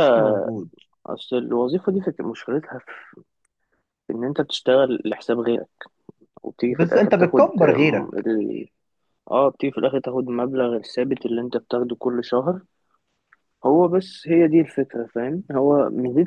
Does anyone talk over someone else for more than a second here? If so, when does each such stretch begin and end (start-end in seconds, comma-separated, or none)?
6.7-8.2